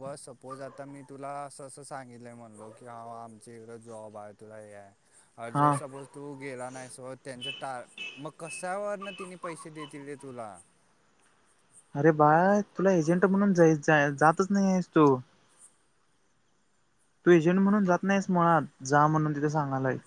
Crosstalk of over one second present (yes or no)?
no